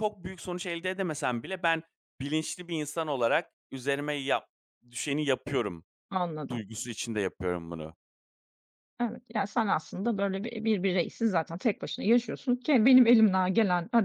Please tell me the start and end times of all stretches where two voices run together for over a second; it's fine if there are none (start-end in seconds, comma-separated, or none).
none